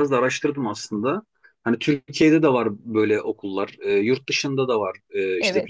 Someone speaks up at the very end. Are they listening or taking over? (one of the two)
listening